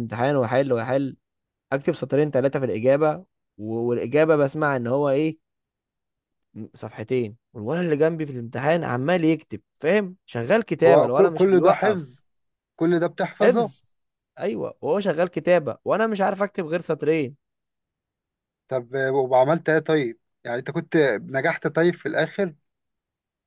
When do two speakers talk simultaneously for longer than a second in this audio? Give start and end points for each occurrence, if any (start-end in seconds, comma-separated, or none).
10.9-12.2